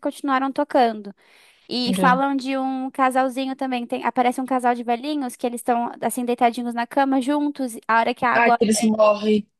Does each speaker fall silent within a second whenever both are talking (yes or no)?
yes